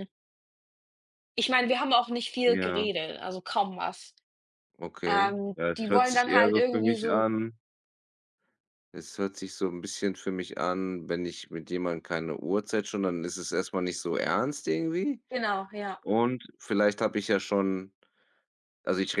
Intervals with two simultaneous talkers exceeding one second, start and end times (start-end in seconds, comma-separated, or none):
5.1-7.3